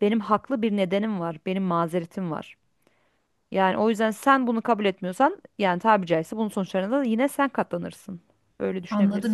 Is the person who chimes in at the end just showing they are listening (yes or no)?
no